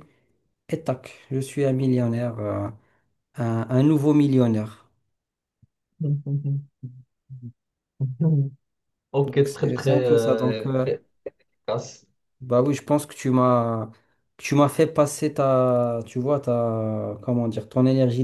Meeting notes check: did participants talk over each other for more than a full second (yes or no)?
yes